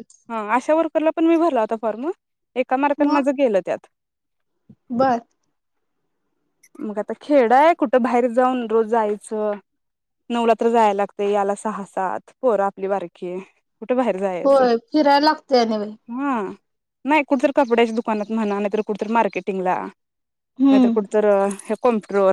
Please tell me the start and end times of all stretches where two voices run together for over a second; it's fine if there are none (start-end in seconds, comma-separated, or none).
none